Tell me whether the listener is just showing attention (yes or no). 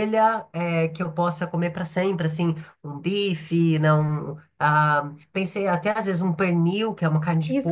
no